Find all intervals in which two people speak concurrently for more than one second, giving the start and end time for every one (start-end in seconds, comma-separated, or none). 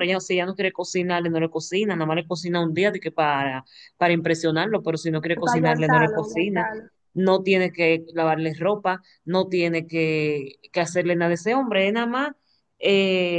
5.3-6.7